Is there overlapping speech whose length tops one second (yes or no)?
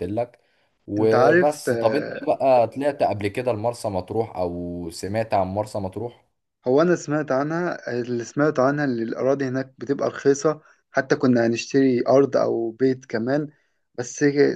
yes